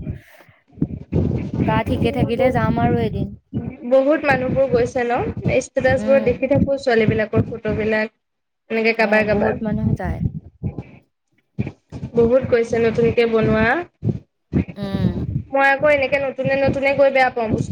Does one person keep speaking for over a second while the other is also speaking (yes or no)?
no